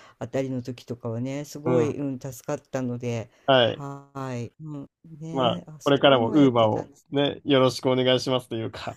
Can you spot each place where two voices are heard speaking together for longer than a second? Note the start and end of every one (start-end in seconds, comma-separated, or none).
5.3-7.2